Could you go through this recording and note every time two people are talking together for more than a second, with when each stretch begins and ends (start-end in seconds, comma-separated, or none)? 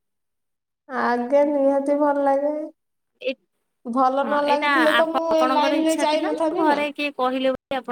4.2-6.6